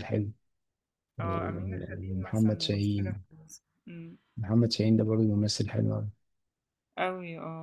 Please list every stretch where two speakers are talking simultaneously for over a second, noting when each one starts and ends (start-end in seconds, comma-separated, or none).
1.2-3.2